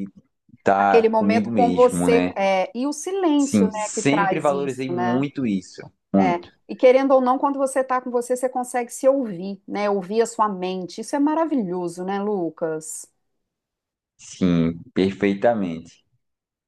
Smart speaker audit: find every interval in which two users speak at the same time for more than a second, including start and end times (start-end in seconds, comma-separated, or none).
0.8-2.3, 3.4-5.2